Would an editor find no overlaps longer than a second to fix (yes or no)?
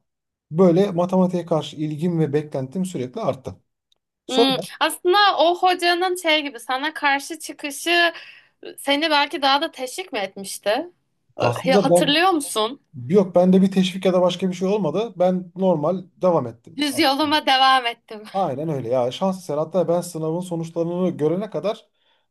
yes